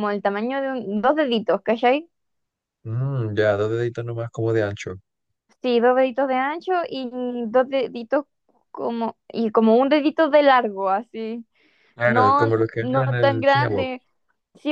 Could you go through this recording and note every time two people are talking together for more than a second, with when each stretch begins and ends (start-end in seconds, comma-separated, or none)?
12.0-13.9